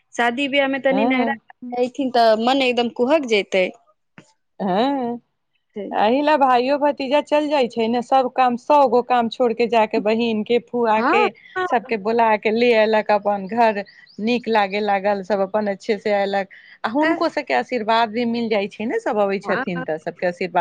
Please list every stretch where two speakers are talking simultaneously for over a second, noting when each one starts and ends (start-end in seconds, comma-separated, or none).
none